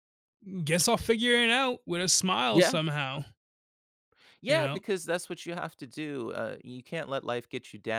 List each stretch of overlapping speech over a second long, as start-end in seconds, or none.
none